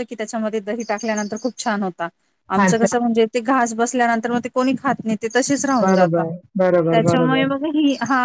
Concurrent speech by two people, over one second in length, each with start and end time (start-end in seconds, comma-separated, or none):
none